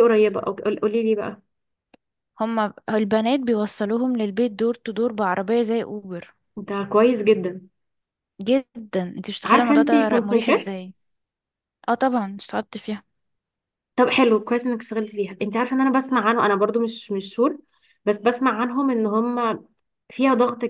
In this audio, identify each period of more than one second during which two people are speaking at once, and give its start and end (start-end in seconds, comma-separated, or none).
9.4-10.9